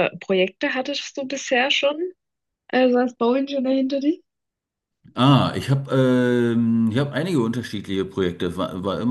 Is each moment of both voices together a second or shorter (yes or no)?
yes